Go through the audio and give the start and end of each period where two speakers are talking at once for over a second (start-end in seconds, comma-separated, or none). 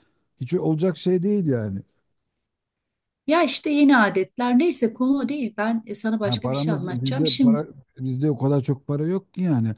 6.2-7.6